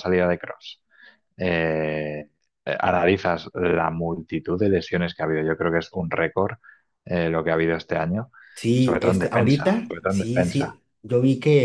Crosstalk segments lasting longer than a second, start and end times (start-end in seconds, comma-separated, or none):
8.8-10.8